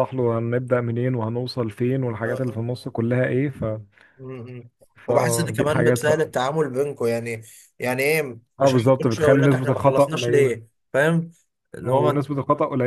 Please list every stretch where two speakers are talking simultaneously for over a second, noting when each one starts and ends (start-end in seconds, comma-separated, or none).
5.1-6.3, 8.6-10.6